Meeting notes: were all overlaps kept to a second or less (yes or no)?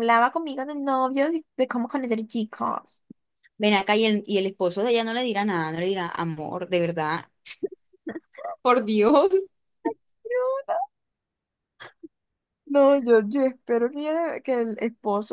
yes